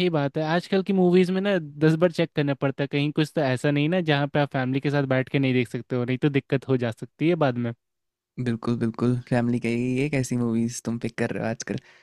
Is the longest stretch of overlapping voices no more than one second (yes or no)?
yes